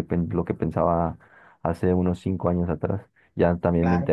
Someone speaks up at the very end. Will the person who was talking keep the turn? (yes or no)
yes